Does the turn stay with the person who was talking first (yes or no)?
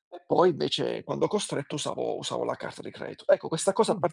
yes